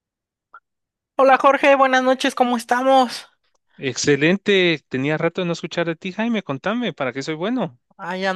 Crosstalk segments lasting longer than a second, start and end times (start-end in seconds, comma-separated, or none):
none